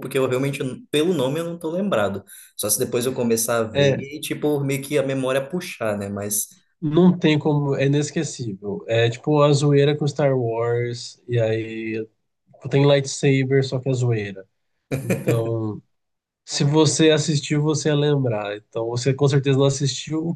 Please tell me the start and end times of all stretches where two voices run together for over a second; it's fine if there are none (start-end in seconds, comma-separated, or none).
none